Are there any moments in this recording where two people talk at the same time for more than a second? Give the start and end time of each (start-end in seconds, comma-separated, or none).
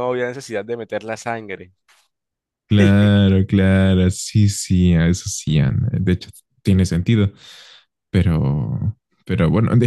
none